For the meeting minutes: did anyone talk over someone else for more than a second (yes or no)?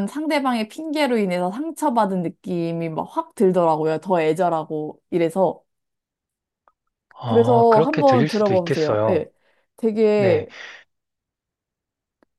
yes